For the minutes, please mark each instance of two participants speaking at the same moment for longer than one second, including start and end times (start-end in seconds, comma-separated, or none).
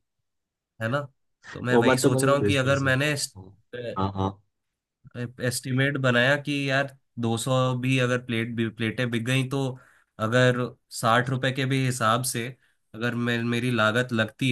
1.7-3.1